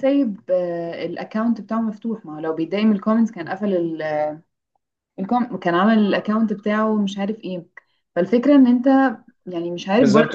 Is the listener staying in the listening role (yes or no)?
no